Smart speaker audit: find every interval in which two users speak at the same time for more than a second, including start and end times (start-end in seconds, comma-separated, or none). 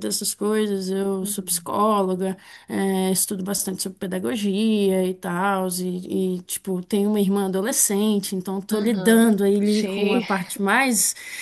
8.7-10.2